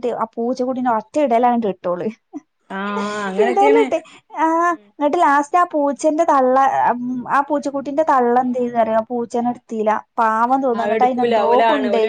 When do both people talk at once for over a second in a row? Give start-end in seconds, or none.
none